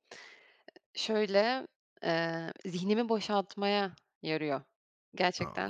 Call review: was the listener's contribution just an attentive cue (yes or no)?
no